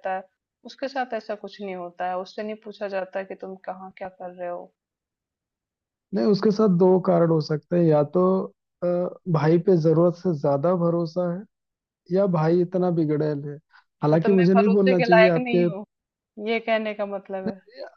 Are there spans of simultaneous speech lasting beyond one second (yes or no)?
yes